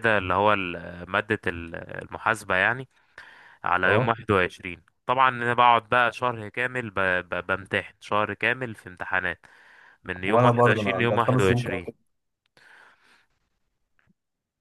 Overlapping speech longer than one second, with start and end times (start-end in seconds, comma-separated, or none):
10.2-11.9